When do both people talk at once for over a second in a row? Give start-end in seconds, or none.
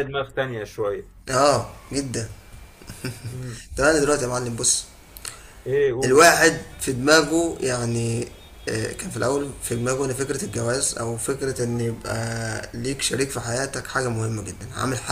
none